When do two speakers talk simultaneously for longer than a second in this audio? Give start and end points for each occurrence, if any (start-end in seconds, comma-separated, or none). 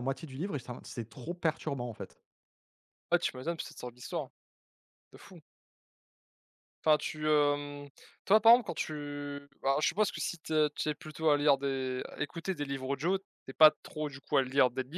none